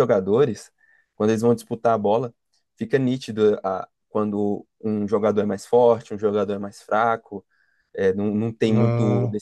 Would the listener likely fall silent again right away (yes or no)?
yes